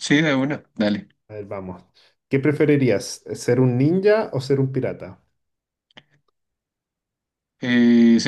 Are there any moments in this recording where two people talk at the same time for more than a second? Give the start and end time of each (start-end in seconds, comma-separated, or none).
none